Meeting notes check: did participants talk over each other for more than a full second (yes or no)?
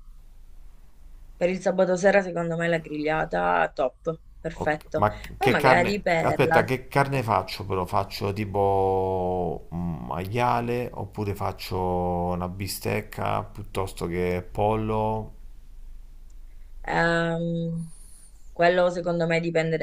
yes